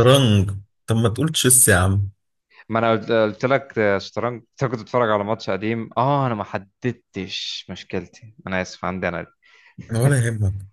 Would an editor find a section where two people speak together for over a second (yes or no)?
no